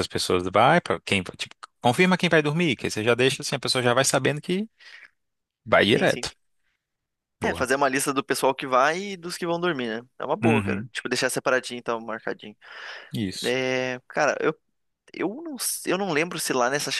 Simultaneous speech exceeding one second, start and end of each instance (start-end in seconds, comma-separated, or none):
none